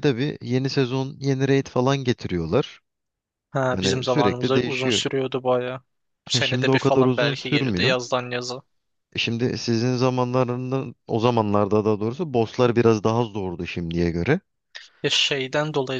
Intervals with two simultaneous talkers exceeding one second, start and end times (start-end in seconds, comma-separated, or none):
3.7-5.0, 6.3-8.0